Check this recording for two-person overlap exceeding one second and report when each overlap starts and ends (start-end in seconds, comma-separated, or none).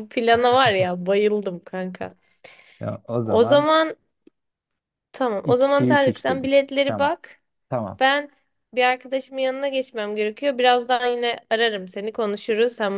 5.4-7.1